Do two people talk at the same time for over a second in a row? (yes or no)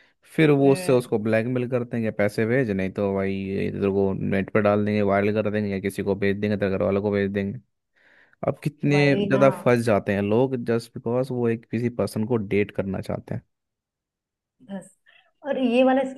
no